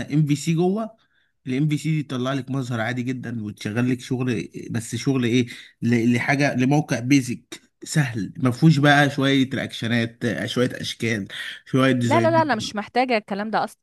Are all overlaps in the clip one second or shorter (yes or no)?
yes